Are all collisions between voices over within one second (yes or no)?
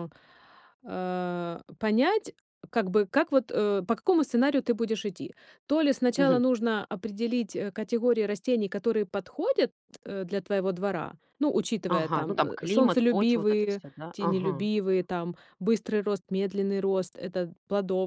no